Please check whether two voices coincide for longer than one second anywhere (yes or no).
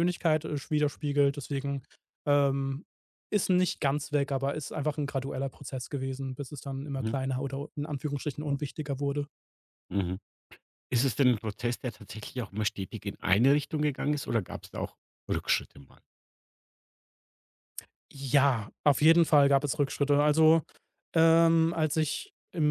no